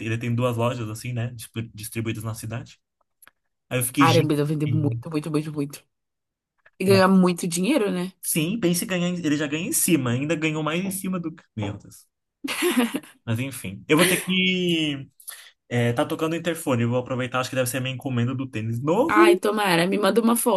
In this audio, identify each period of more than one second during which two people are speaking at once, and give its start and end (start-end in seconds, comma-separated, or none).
none